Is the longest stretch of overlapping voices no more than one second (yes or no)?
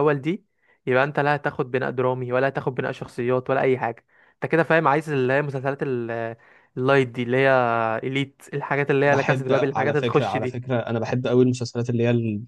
no